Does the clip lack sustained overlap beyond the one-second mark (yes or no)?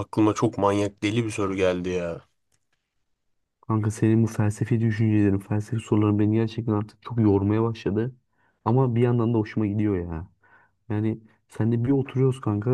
yes